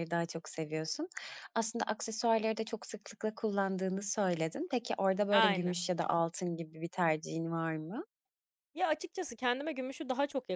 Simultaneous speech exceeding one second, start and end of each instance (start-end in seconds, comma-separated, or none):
none